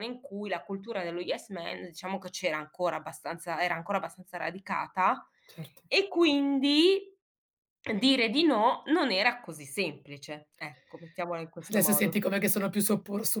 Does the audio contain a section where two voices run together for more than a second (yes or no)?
no